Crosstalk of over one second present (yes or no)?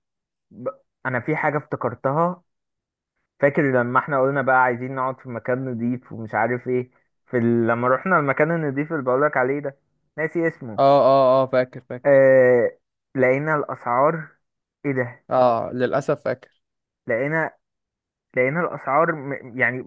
no